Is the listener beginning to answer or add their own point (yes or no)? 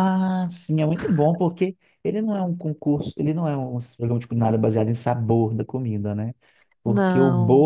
no